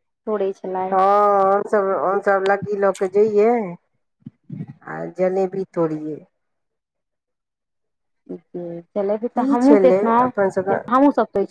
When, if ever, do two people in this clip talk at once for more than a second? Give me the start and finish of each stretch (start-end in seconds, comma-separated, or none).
9.2-11.0